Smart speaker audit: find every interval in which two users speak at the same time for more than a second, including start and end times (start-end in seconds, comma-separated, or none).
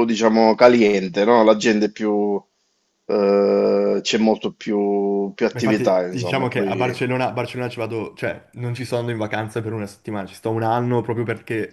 5.5-7.0